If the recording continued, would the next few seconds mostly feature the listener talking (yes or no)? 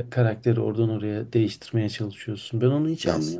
yes